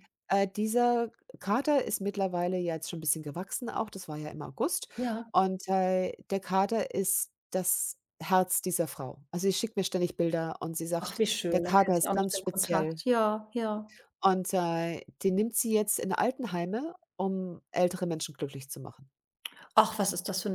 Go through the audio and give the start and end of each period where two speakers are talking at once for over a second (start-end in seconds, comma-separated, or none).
11.0-13.0